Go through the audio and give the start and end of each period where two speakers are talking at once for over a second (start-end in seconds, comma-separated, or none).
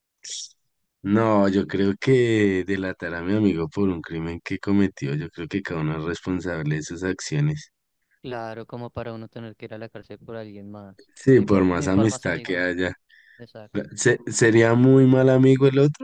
11.2-12.7